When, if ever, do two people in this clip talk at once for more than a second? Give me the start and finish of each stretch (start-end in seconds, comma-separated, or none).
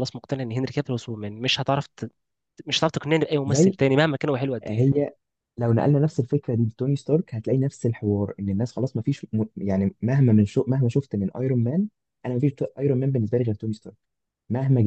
none